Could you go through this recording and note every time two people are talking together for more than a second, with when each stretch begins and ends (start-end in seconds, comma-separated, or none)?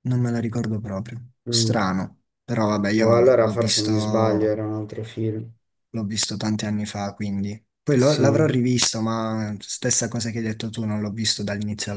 3.0-4.6